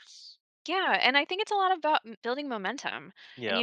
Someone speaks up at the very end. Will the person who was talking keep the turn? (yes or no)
yes